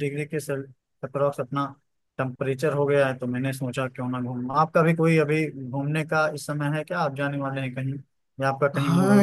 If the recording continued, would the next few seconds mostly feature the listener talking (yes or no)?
yes